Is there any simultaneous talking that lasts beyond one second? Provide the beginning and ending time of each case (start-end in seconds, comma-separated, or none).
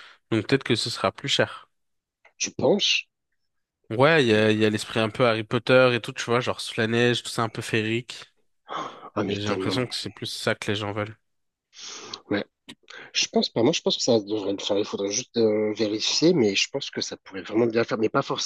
none